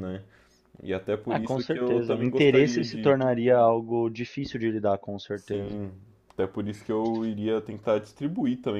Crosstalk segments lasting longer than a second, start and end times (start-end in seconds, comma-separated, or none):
1.3-3.1